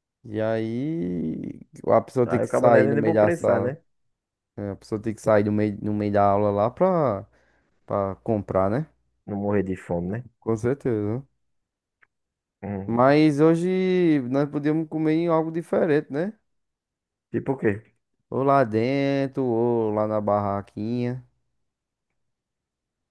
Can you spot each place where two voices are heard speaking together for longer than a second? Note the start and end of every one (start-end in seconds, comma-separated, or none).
2.2-3.8